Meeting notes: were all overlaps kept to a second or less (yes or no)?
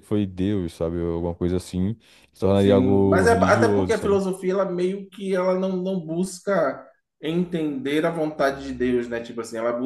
no